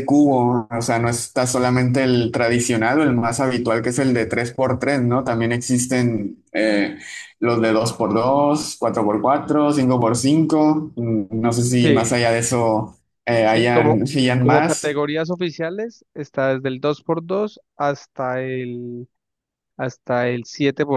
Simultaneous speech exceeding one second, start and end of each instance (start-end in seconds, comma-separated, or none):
13.4-15.0